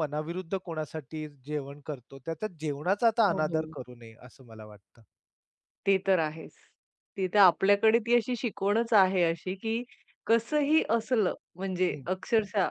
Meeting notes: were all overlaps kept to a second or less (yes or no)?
yes